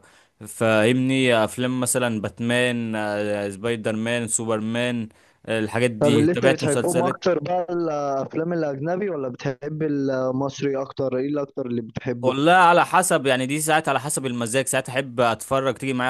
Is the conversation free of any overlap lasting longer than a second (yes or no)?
no